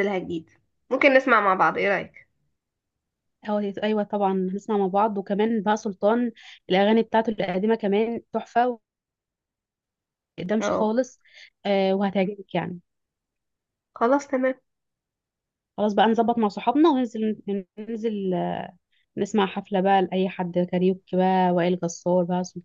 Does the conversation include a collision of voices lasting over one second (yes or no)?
no